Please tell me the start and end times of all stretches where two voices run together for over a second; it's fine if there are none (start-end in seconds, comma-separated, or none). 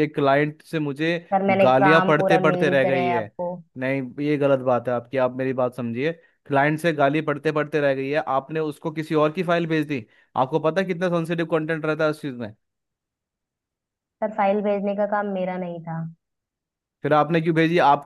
1.6-3.3